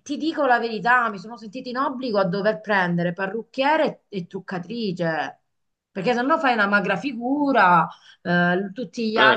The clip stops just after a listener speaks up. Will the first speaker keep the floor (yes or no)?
yes